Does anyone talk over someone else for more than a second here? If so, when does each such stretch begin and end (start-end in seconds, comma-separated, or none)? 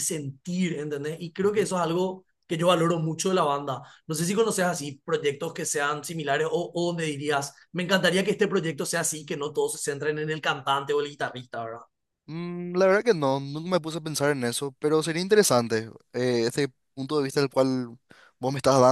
none